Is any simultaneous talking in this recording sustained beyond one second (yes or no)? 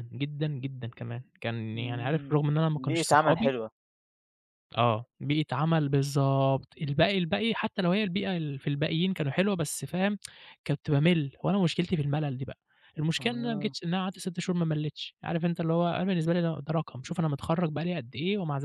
yes